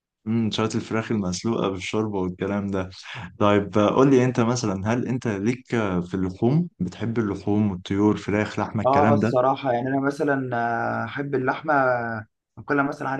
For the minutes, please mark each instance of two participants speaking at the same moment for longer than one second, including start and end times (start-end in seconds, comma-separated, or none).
none